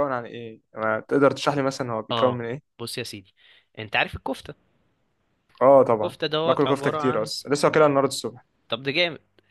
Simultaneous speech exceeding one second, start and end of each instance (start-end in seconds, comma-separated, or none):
6.0-7.3